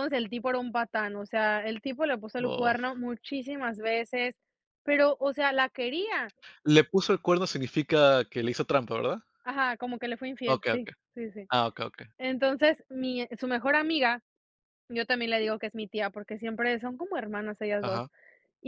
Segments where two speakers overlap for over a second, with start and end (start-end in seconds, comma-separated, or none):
none